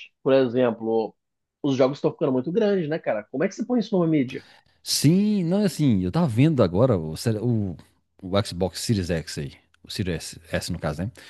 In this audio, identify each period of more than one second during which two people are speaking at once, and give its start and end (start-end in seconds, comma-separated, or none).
none